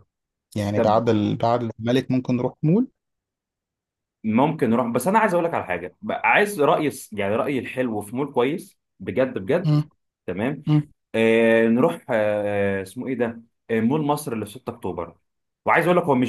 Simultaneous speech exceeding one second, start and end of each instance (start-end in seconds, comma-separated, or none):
none